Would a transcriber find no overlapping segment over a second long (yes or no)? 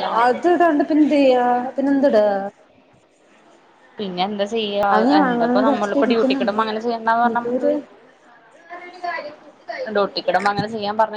no